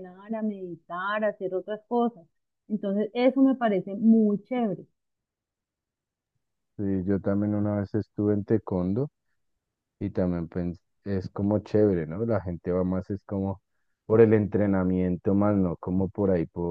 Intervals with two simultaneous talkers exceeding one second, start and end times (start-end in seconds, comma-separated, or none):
none